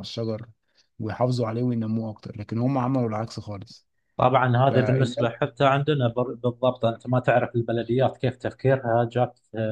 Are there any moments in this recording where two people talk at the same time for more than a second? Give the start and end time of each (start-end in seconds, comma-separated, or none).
none